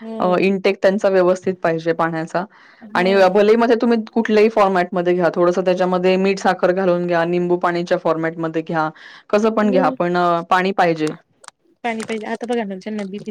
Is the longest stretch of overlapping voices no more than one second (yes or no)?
yes